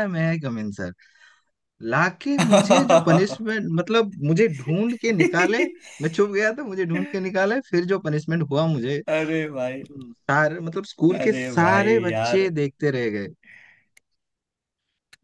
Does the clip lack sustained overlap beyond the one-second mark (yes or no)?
no